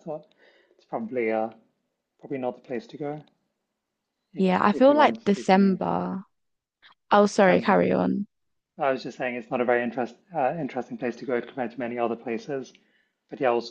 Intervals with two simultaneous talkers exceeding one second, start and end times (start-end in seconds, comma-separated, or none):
4.4-6.0